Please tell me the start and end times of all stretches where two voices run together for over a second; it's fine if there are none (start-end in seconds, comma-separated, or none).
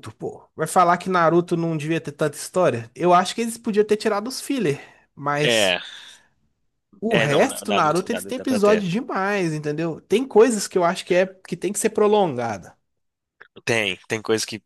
7.1-8.9